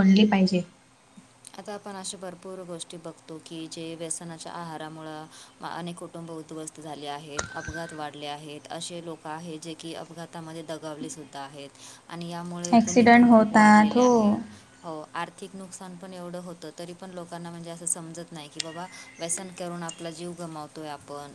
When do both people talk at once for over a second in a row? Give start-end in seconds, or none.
12.7-14.1